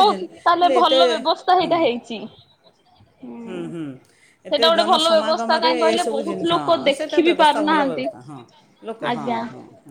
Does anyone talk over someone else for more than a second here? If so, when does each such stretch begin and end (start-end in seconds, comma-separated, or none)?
5.6-8.1